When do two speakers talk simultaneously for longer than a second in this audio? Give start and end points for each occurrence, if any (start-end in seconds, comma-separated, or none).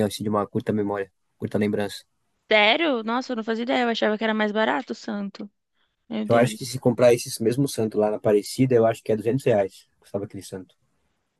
none